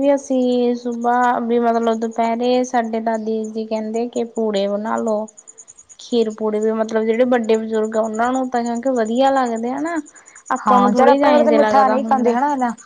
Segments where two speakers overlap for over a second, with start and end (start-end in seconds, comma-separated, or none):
10.7-12.3